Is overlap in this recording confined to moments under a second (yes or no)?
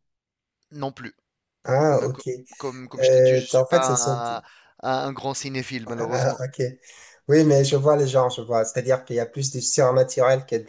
no